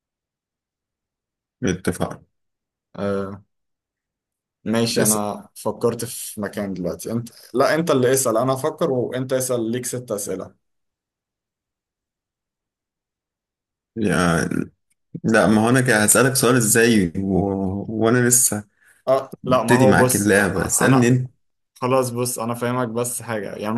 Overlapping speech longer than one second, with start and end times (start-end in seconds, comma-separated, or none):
19.4-21.1